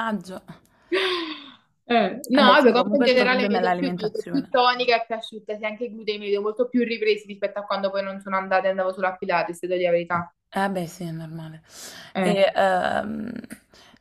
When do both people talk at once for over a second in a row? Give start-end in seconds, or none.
2.4-4.5